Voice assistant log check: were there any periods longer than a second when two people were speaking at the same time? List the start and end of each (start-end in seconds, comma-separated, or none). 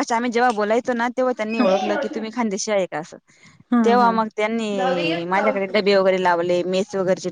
3.8-5.5